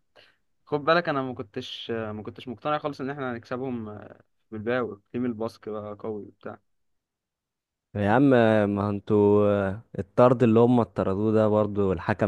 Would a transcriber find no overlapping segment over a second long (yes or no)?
yes